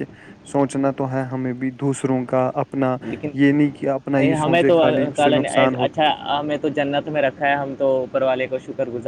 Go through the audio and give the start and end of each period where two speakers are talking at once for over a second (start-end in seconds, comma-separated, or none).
4.2-5.8